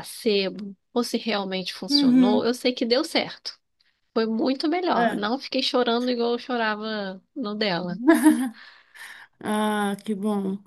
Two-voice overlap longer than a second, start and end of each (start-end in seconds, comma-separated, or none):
none